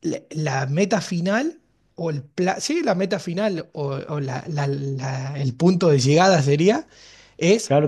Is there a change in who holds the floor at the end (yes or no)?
no